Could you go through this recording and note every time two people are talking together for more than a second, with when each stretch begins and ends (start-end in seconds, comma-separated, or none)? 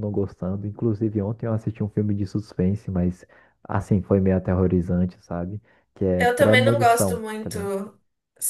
6.2-7.7